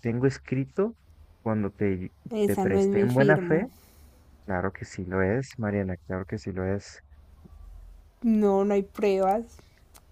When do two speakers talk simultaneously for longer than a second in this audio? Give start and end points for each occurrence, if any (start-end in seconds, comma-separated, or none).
2.3-3.7